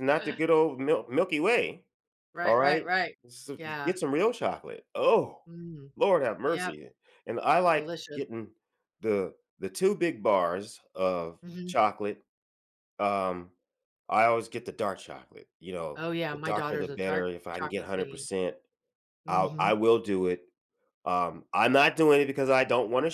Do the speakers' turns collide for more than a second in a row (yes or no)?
yes